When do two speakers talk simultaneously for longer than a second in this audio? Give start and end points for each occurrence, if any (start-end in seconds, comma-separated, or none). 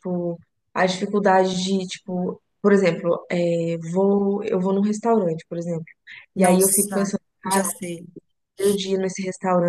6.4-7.7